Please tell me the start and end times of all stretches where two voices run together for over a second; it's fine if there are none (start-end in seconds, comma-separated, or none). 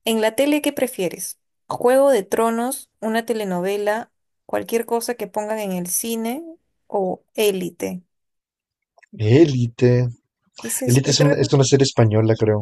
none